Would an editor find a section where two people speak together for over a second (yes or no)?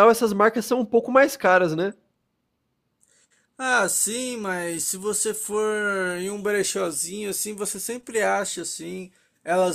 no